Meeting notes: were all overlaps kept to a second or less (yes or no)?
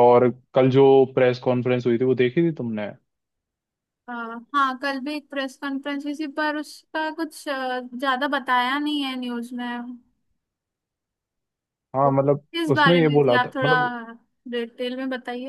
no